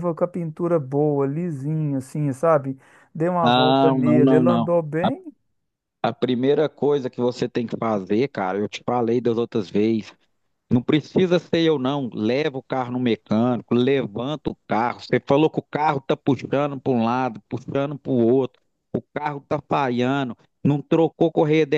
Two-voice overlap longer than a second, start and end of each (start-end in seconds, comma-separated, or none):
3.4-4.7